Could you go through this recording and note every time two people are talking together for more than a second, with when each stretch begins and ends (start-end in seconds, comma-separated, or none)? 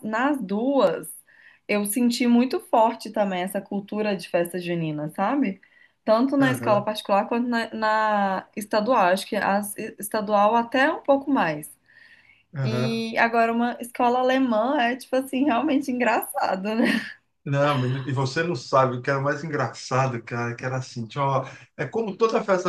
none